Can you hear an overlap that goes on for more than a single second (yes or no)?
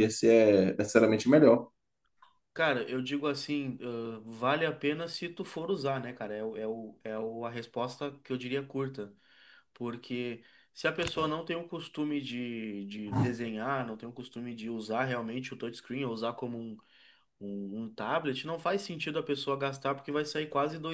no